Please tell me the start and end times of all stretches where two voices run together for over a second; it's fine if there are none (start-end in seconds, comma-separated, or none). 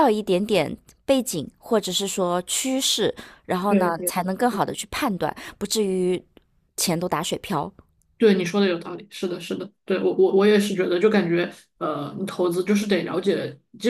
none